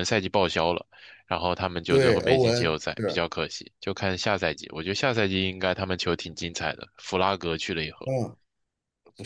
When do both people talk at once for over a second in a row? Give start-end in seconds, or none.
1.9-3.2